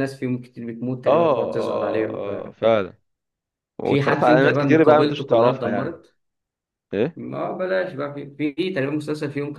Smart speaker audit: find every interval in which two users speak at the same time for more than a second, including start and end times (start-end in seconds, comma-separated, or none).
1.1-2.3, 3.8-6.0